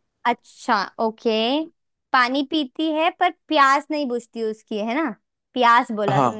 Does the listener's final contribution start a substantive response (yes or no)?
no